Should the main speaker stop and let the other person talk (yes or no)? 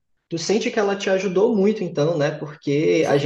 yes